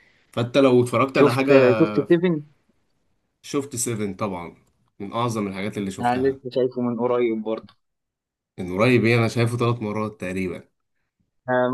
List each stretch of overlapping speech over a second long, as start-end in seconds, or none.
none